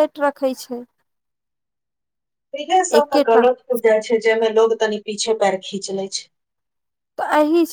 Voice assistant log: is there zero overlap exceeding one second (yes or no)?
yes